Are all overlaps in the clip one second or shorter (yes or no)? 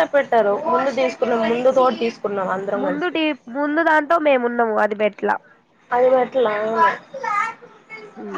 yes